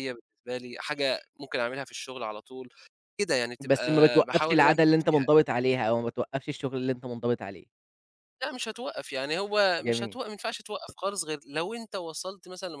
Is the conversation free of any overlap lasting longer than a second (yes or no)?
no